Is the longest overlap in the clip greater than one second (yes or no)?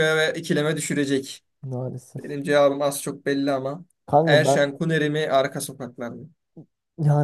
no